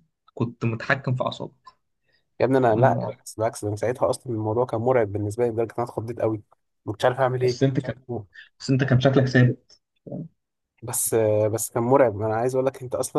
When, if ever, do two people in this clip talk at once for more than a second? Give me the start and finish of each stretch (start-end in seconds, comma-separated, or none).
none